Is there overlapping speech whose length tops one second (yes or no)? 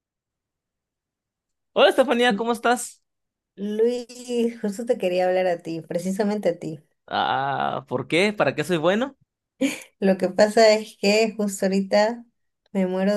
no